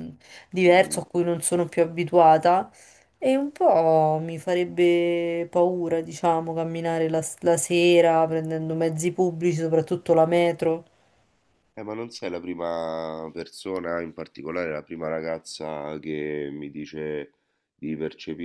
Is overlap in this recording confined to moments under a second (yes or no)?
yes